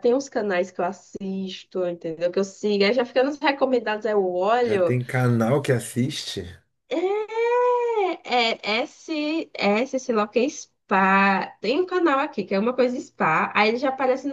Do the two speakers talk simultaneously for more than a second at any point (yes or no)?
no